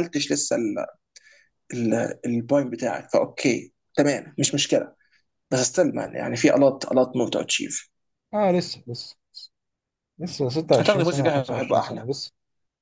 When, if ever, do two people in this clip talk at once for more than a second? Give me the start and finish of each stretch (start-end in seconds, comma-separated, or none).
10.8-12.1